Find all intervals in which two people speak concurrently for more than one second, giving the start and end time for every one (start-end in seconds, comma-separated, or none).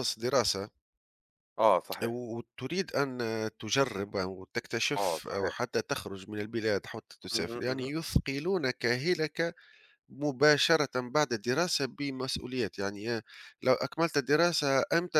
none